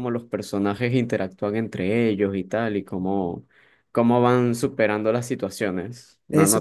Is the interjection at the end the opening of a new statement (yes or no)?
yes